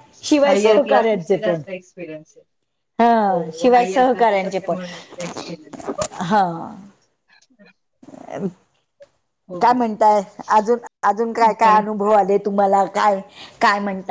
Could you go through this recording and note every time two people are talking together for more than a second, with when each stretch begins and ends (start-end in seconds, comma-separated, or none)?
3.2-4.8